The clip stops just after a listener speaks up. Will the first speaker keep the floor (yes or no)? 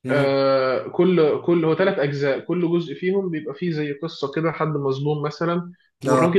yes